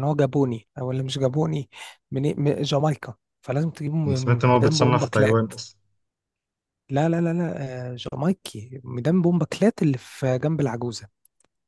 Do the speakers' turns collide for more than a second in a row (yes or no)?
yes